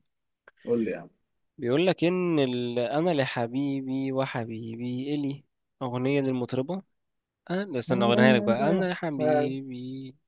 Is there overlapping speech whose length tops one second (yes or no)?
yes